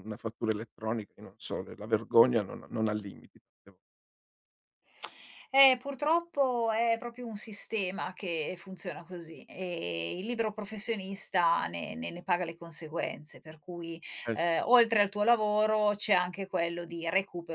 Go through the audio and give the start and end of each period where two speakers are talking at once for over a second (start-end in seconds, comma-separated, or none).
none